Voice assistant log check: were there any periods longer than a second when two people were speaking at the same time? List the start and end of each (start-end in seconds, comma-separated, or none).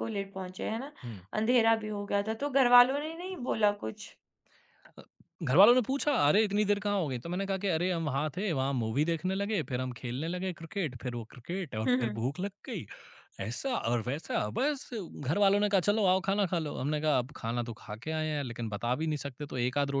none